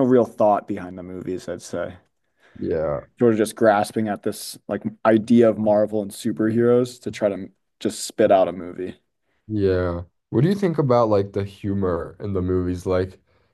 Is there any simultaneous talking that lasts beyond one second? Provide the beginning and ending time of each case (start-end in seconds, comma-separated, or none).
none